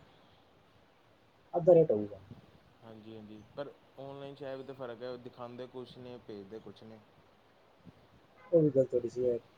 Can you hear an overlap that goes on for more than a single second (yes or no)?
no